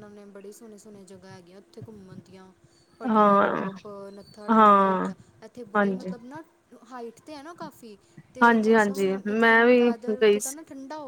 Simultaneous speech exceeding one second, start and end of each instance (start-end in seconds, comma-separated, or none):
8.4-10.6